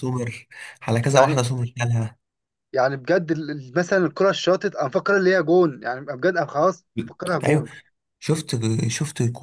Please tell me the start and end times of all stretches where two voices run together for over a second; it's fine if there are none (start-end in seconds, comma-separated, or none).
none